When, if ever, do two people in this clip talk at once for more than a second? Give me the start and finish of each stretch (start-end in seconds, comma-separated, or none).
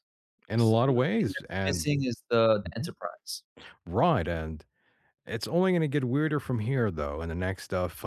0.6-1.9